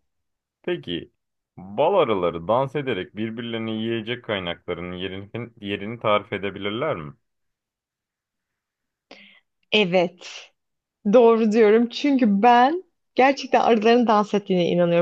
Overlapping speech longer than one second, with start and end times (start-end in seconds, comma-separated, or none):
none